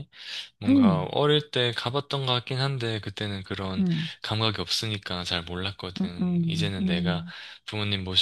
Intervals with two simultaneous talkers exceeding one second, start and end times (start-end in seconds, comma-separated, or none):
6.0-7.2